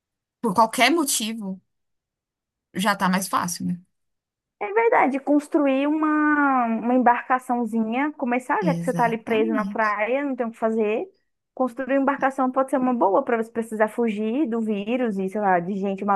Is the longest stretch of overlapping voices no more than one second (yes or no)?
no